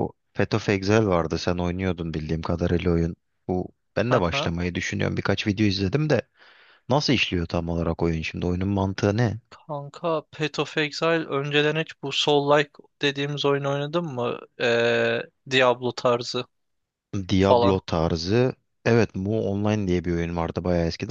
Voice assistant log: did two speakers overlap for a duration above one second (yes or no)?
no